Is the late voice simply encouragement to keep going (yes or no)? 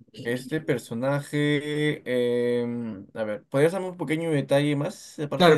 no